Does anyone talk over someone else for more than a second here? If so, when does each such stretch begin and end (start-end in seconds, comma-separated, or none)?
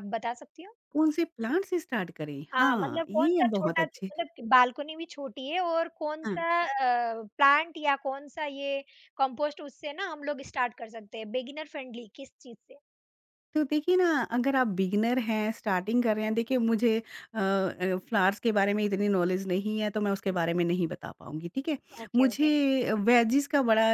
2.5-4.1